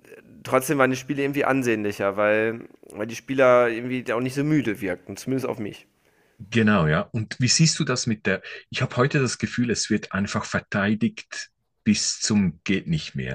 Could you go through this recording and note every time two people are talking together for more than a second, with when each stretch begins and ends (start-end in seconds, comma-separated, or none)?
none